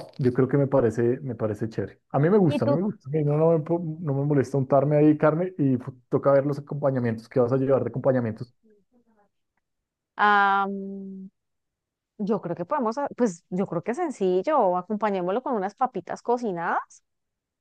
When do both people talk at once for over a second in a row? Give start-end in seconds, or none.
none